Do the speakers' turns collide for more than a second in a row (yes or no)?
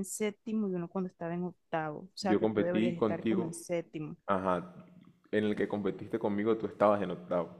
yes